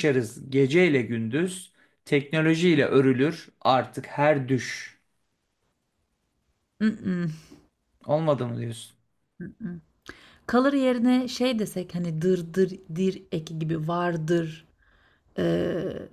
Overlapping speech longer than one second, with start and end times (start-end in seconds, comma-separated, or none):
none